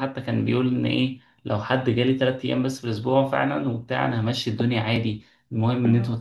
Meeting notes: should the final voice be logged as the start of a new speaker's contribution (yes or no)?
no